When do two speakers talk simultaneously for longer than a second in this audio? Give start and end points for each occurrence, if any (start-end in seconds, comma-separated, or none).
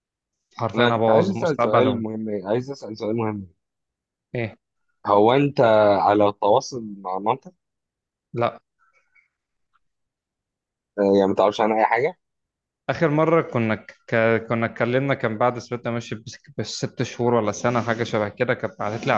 0.8-2.0